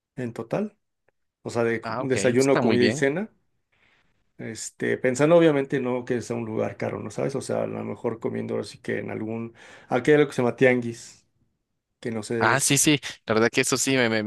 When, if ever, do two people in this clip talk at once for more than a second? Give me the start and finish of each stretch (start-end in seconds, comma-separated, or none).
1.8-3.1